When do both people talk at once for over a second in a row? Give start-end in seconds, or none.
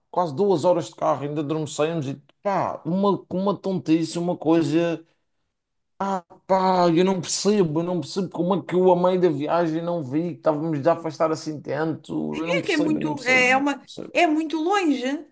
12.6-14.1